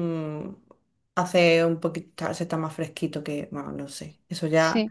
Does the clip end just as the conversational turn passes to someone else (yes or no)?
no